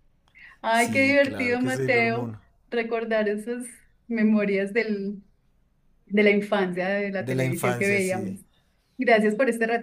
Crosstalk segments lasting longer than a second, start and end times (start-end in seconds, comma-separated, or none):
0.7-2.3, 7.2-8.4